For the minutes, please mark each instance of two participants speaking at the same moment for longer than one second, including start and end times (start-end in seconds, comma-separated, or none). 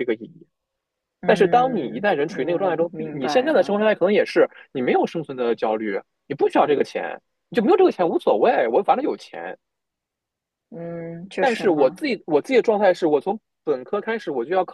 1.2-3.9